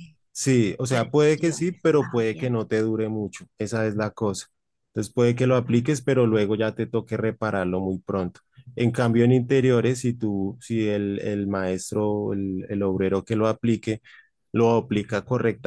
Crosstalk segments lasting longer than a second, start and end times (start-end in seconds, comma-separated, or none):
0.9-2.5